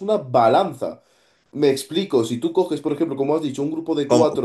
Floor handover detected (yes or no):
no